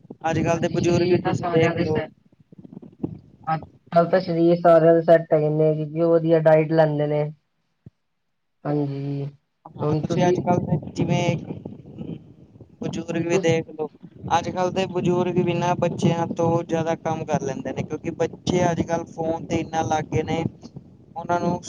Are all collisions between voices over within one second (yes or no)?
no